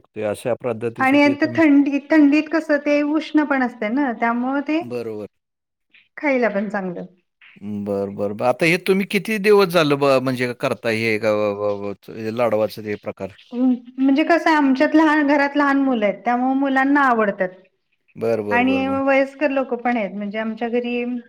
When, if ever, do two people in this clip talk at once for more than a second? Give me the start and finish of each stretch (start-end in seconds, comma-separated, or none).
none